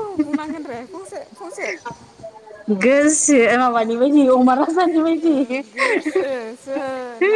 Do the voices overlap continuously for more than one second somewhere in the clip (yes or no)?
no